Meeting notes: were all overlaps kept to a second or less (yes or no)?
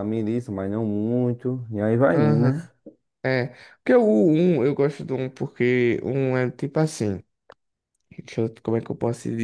yes